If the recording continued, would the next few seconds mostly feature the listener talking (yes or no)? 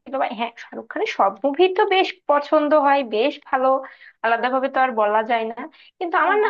no